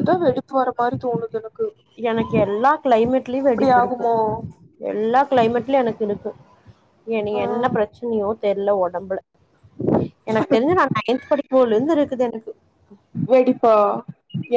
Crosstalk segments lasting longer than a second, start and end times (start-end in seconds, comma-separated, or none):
none